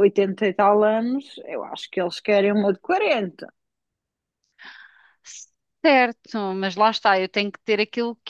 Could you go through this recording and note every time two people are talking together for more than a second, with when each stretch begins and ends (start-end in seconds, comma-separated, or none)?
none